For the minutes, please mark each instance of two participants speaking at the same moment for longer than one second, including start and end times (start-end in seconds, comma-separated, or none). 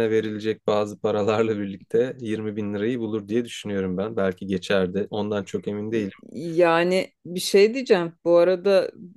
none